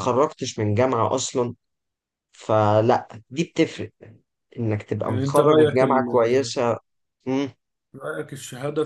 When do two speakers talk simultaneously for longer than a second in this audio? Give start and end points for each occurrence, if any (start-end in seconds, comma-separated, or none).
5.1-6.5